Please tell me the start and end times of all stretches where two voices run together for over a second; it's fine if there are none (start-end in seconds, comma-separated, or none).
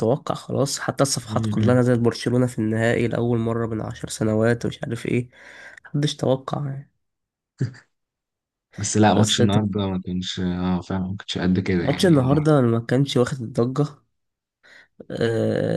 none